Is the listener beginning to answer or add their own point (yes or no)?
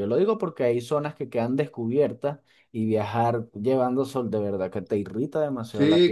yes